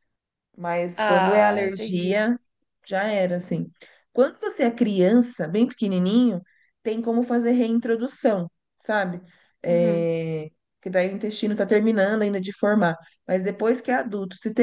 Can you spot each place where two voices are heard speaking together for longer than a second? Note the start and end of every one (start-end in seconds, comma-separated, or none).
1.0-2.2